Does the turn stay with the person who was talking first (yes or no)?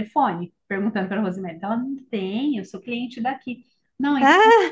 yes